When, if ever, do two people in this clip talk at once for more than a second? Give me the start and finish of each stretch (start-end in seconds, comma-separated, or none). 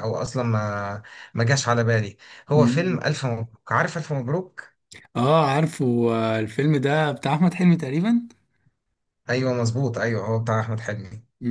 none